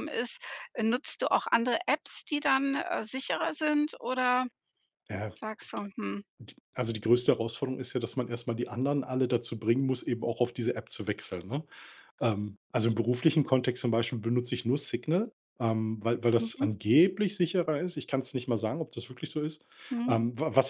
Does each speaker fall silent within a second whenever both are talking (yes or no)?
yes